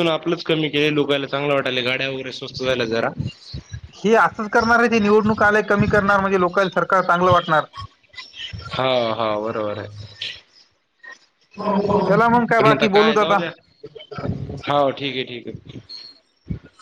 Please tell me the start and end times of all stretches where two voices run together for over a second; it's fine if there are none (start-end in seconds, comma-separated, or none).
12.1-13.4